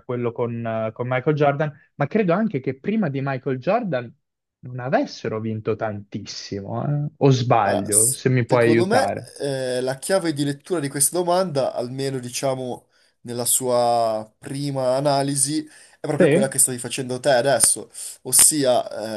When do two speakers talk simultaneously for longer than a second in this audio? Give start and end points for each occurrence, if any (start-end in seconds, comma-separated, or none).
7.6-9.3